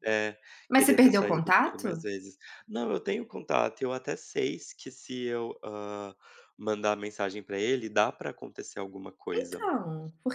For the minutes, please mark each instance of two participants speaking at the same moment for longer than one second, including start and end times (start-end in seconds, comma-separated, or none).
0.7-2.0